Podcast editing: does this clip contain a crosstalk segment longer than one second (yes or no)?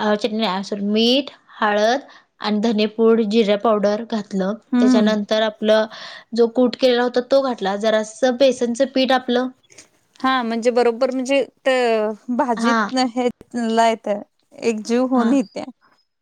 no